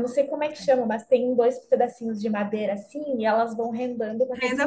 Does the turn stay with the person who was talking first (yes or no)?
yes